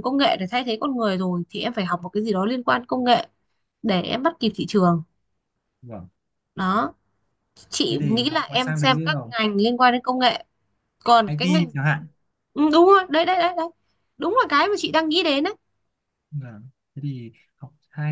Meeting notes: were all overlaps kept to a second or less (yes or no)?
no